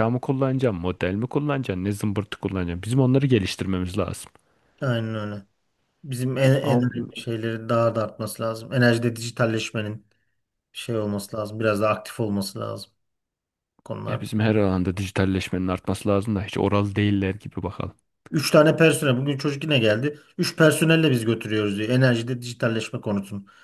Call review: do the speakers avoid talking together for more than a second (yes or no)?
yes